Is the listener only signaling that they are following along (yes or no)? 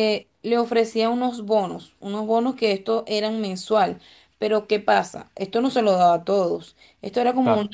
yes